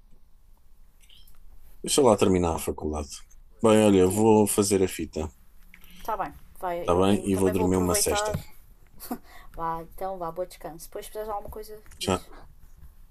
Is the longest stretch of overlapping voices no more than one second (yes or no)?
no